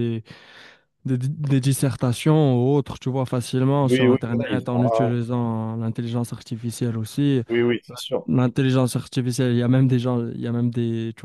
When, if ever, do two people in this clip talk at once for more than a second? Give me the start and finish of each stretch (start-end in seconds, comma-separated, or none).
3.8-5.2